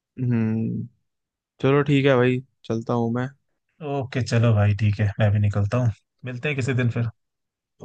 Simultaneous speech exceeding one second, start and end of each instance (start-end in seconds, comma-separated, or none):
none